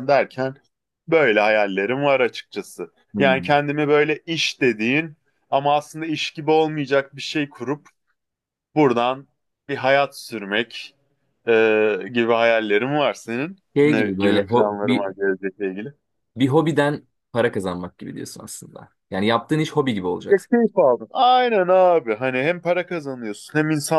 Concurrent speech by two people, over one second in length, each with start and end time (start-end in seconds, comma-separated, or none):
13.8-15.1